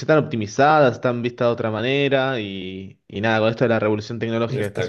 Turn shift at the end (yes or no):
no